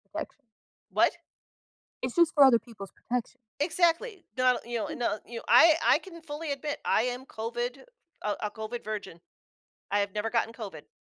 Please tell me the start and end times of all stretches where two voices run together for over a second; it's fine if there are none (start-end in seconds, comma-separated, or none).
none